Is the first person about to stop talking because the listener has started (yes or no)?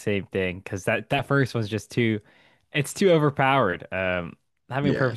no